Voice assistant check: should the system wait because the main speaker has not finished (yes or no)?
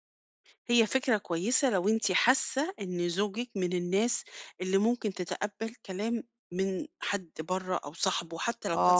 no